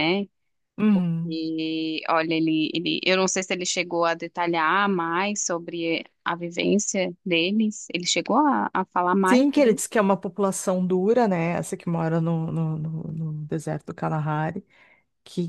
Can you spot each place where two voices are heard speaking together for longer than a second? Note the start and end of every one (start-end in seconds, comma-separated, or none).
none